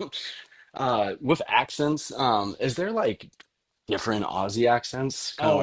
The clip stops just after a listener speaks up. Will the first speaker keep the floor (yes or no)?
no